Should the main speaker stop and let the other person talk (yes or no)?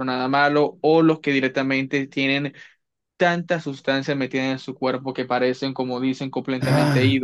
yes